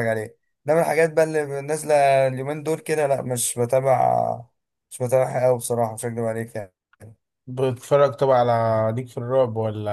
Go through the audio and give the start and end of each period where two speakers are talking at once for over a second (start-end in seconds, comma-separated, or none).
none